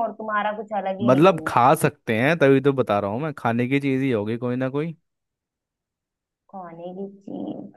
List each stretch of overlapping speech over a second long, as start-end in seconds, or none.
none